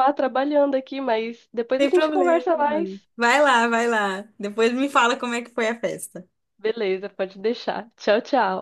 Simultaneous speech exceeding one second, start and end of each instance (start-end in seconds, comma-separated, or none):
1.8-3.1